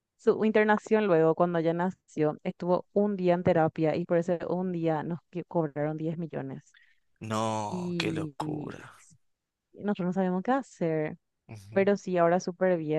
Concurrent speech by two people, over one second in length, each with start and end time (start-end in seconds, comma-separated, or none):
7.7-9.0